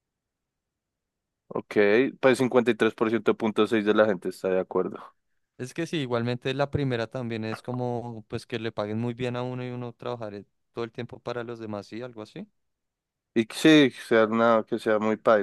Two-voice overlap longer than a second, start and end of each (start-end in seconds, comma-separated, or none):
none